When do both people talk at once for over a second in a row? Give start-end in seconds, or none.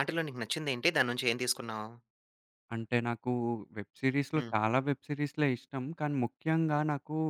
none